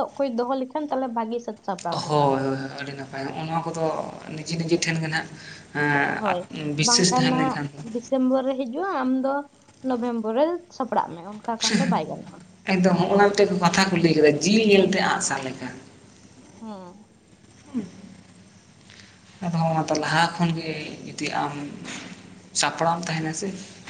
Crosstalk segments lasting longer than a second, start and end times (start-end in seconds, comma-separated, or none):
6.1-7.6